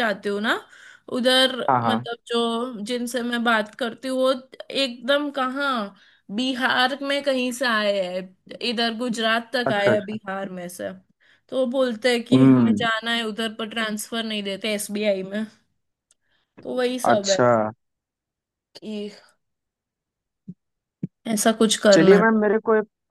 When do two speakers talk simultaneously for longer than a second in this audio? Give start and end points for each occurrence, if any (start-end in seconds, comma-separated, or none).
none